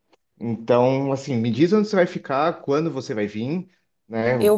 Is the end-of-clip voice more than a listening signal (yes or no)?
no